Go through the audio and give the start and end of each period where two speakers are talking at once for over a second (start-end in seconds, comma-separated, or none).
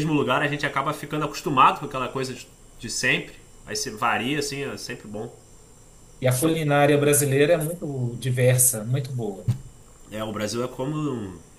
none